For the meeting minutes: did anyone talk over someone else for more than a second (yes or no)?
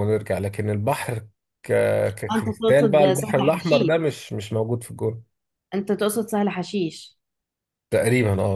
yes